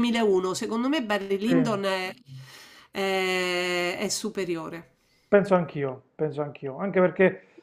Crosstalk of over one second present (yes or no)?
no